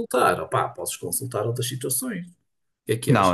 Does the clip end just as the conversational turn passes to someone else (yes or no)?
yes